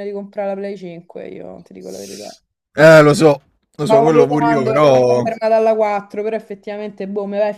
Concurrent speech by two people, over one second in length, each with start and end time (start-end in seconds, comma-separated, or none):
3.8-5.2